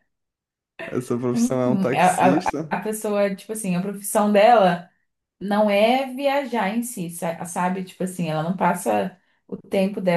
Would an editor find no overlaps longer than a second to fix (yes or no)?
no